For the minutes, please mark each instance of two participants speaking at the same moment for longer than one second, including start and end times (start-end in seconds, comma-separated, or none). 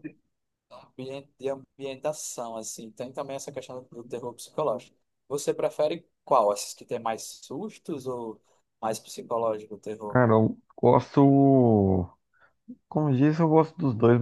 none